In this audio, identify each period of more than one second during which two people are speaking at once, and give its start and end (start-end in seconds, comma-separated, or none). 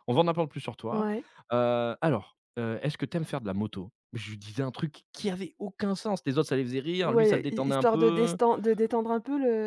7.0-8.4